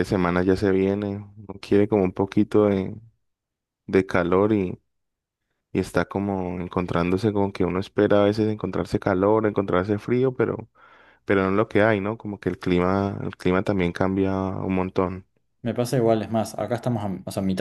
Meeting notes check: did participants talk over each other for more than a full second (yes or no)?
no